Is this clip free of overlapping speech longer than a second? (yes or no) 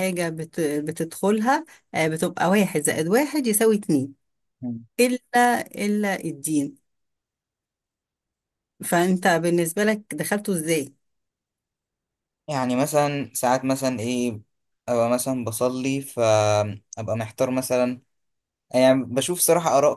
yes